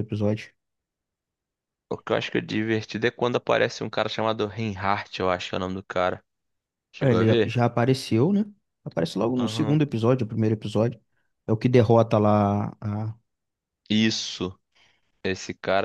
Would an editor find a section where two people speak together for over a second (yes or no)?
no